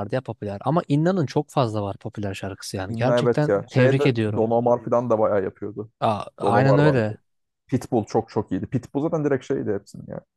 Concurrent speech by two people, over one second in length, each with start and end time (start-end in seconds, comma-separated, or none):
2.9-4.4